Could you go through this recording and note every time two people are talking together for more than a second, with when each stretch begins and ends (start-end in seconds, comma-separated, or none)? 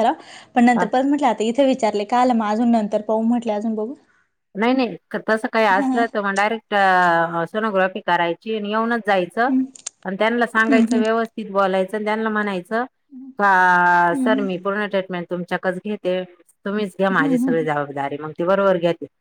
none